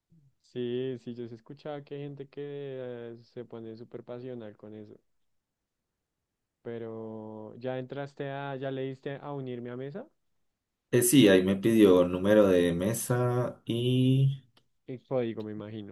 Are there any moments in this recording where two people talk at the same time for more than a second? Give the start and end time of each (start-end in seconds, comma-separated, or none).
none